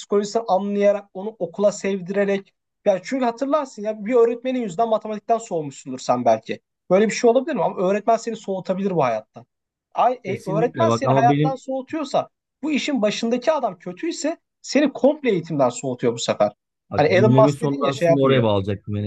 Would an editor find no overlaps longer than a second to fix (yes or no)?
no